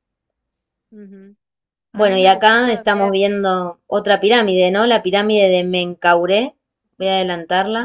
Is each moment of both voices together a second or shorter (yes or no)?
no